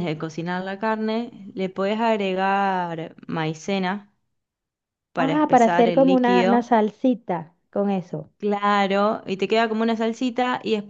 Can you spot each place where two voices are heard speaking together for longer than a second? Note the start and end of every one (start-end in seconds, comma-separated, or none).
5.2-6.7